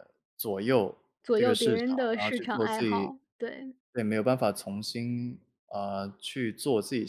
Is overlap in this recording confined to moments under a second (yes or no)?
no